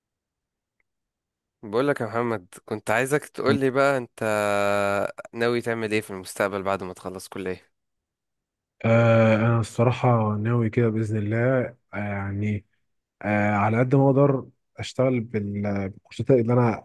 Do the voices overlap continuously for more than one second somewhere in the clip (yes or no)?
no